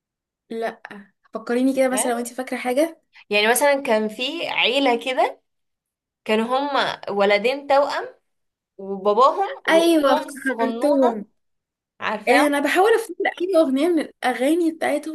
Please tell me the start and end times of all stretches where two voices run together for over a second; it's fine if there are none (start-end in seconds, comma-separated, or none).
9.7-11.2